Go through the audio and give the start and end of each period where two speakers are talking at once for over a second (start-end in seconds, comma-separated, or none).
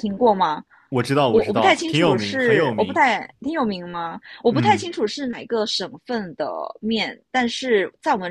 1.3-3.0